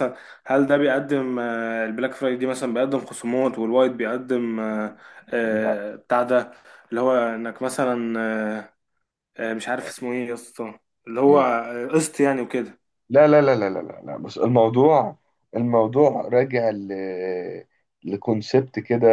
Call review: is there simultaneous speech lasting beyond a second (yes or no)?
no